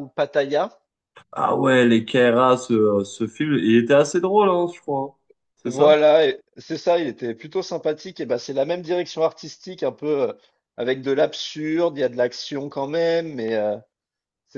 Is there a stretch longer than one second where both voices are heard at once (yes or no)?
no